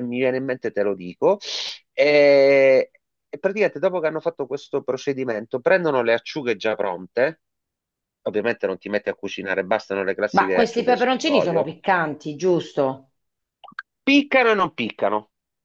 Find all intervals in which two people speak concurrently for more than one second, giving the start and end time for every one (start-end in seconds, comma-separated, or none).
10.3-11.7